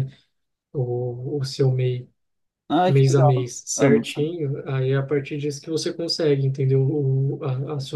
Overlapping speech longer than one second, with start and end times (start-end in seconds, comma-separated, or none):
2.9-4.3